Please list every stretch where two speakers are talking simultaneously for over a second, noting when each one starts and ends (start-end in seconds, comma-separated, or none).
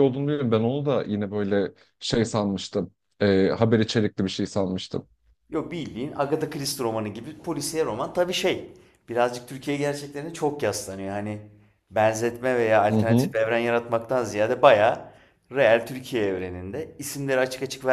none